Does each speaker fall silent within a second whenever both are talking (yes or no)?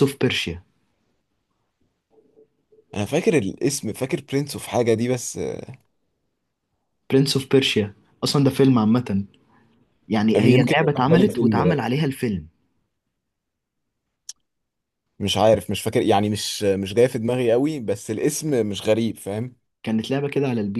no